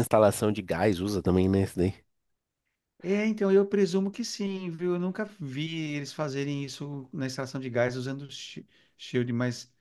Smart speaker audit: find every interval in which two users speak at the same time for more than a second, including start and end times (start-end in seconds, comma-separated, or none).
none